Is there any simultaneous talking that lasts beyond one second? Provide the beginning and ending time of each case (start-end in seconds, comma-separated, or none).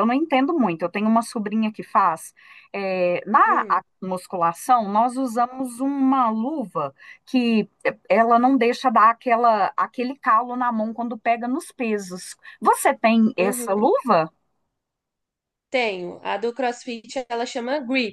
none